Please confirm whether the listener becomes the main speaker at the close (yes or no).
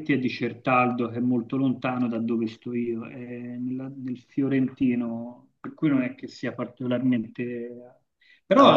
no